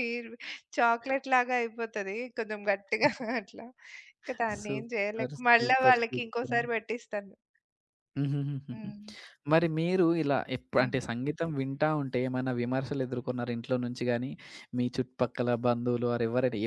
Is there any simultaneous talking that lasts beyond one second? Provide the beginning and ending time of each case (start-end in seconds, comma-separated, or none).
4.6-6.6